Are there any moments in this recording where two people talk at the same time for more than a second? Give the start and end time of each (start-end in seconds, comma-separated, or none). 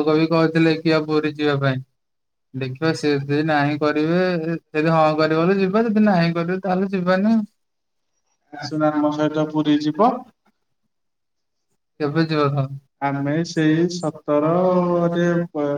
14.0-15.3